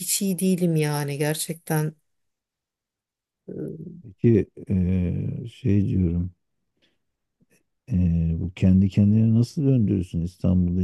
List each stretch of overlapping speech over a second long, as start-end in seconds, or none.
none